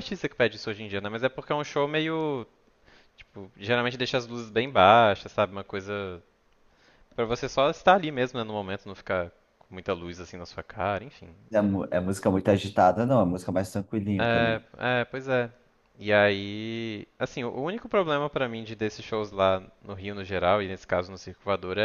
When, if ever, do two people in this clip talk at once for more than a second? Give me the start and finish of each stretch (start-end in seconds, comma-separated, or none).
none